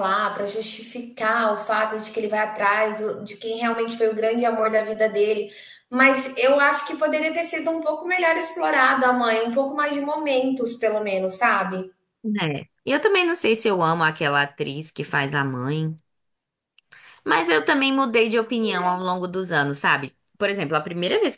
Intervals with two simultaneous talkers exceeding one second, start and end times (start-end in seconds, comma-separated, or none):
none